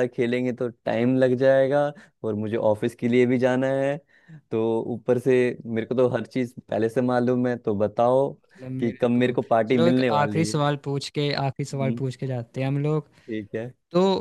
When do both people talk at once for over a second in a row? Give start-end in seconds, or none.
8.8-10.6